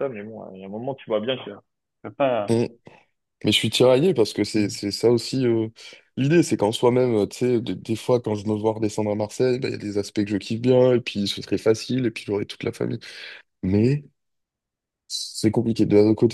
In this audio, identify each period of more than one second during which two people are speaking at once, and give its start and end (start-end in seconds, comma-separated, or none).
none